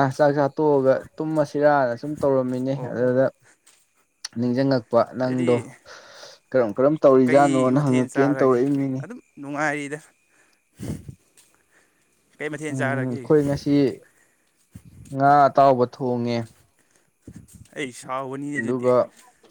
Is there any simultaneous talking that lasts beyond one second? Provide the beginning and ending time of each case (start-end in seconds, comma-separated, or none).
7.3-8.6